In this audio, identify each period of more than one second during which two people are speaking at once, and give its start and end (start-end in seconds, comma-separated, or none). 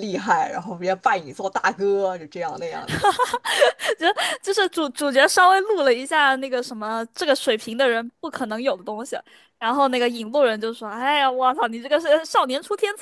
none